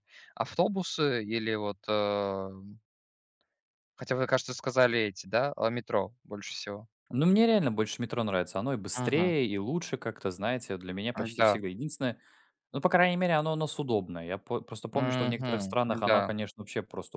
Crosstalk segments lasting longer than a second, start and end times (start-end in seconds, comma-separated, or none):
14.9-16.3